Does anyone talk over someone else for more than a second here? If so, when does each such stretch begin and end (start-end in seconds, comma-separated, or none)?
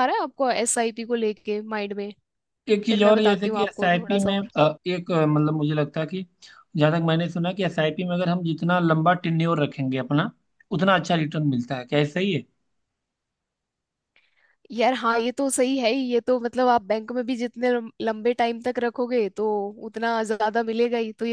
2.9-4.5